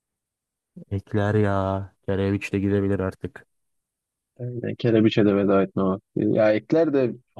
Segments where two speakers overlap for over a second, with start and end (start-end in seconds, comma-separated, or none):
none